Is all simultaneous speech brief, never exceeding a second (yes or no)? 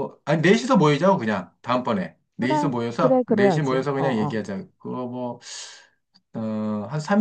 no